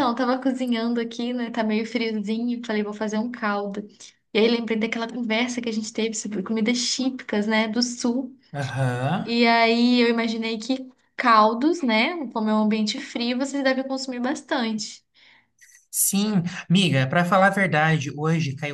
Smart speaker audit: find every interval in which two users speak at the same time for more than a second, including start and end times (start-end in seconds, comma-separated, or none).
none